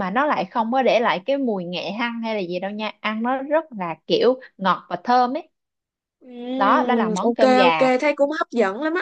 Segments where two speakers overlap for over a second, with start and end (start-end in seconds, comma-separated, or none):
6.6-7.9